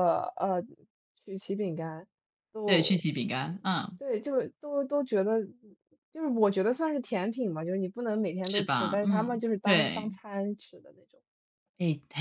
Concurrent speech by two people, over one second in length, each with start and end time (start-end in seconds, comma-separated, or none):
8.4-10.1